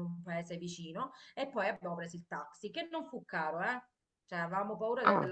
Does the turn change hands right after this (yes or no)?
no